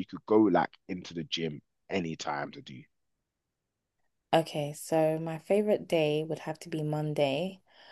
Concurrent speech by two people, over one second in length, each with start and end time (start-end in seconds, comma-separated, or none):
none